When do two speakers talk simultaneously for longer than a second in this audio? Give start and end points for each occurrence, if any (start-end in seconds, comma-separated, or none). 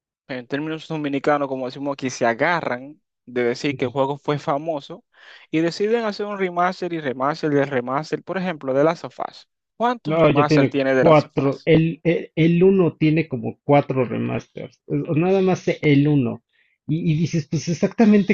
10.0-11.7